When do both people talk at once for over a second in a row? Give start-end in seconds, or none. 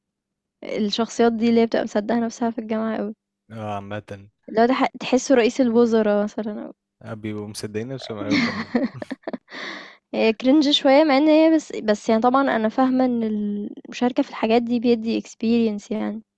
none